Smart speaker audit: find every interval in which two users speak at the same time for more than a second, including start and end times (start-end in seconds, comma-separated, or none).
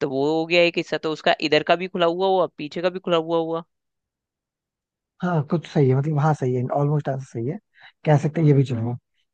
none